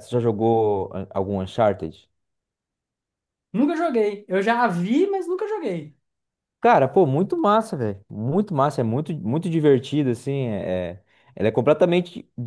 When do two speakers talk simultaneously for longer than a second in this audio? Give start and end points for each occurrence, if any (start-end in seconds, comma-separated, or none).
none